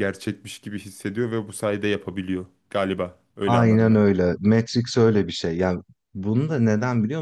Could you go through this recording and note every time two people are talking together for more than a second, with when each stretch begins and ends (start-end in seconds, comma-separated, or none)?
none